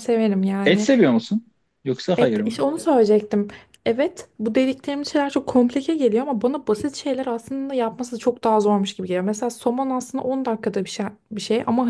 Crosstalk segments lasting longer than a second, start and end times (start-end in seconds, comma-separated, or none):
none